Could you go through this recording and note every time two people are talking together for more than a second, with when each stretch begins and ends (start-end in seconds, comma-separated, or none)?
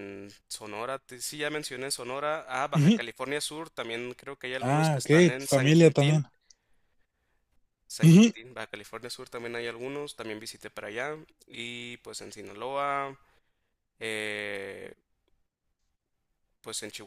4.6-6.2